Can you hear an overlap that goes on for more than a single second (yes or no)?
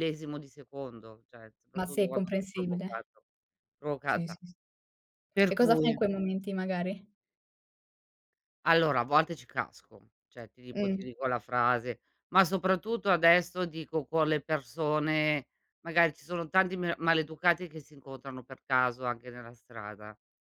yes